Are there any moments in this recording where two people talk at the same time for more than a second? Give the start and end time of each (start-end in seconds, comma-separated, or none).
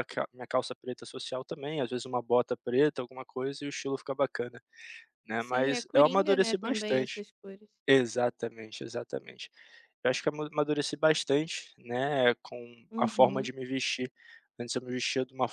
5.5-7.2